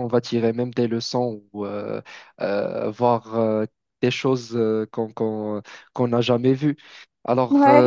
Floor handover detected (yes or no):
no